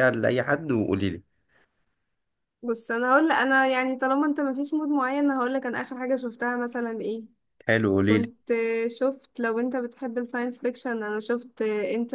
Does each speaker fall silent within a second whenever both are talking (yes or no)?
yes